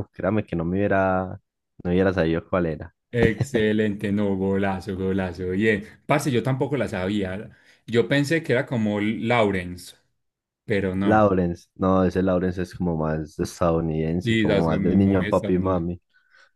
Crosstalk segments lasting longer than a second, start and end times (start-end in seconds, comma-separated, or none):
14.2-15.9